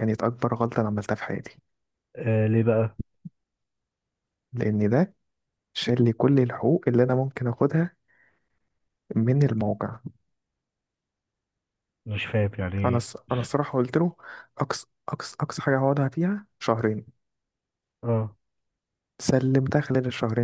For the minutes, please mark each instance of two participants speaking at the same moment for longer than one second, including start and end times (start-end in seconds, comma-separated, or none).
none